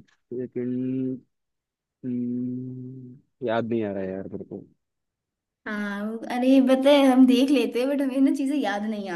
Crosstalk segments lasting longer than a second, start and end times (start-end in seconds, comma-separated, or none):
none